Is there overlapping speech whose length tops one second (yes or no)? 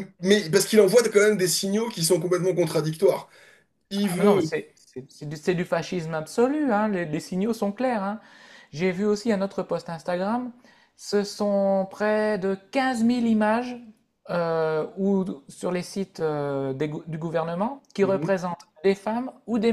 no